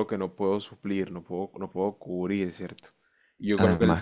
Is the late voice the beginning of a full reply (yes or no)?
yes